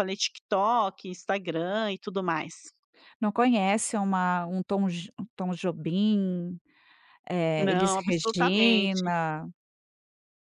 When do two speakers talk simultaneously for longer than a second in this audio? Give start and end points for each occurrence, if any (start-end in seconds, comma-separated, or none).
7.6-9.0